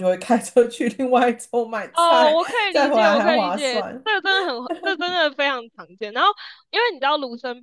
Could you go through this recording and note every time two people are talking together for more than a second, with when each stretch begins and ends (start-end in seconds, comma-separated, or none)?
1.9-4.0